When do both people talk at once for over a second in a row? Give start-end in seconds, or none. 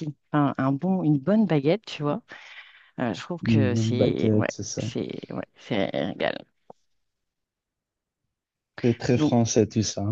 3.4-4.8